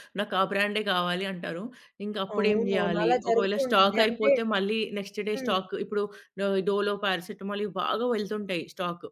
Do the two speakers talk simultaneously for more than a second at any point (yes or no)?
yes